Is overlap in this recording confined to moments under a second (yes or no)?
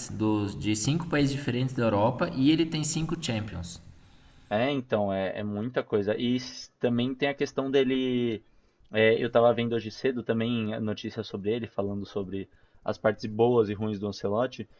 yes